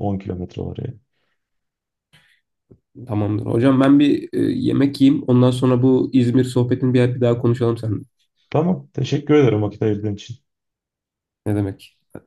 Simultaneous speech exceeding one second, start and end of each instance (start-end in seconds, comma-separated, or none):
none